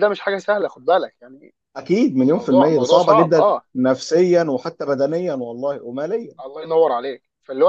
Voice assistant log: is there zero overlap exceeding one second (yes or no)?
no